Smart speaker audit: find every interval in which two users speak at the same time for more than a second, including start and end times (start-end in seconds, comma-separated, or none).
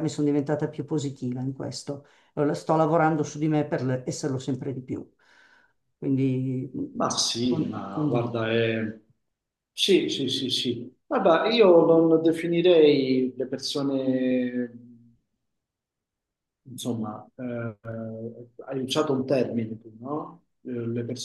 6.9-8.4